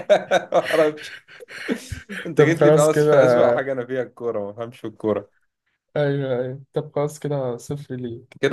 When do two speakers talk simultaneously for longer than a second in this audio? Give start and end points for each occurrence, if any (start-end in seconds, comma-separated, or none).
2.4-3.7